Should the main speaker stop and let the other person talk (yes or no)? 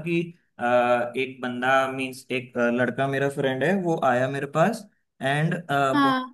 no